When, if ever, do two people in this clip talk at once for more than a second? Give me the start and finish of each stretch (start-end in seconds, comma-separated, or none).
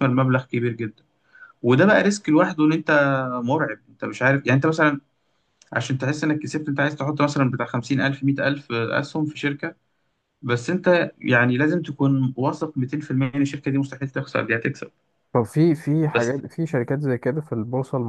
none